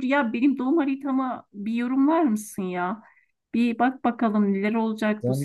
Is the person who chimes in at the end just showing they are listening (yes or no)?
no